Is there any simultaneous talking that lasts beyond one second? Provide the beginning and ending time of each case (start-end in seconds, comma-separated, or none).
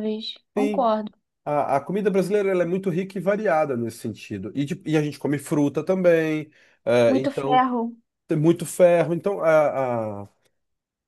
none